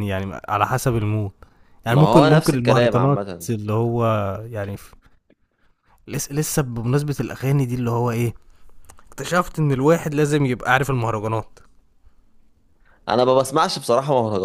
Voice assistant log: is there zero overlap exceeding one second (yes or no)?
no